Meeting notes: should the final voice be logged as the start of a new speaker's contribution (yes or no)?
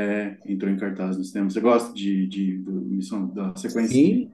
yes